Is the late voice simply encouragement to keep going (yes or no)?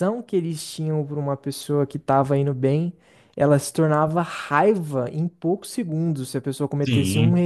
yes